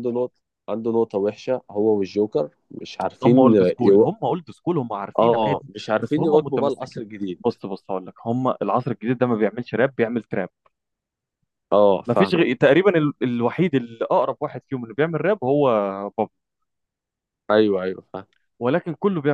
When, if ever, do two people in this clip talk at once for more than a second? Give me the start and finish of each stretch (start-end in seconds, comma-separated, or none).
5.2-7.0